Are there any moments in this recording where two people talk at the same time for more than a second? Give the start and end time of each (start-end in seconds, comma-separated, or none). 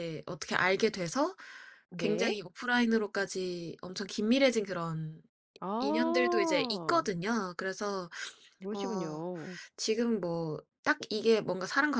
5.8-7.0